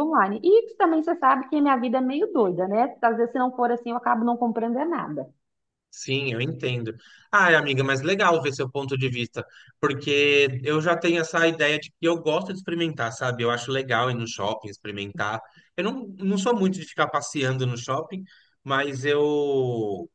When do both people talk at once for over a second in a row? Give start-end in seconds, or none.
none